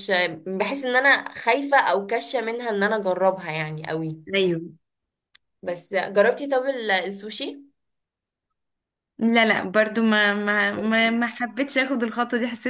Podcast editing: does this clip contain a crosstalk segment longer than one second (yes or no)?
no